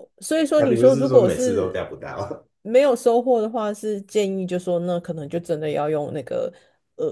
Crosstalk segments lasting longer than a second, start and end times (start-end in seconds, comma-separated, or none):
0.6-1.8